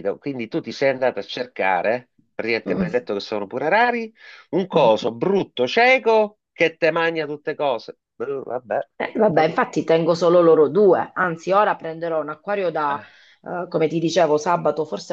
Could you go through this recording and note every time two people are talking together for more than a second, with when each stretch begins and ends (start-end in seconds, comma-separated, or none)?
none